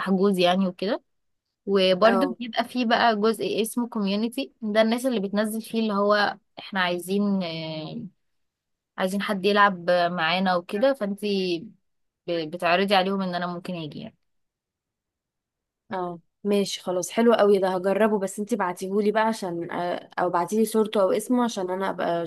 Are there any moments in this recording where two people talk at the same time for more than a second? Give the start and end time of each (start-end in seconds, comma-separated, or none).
none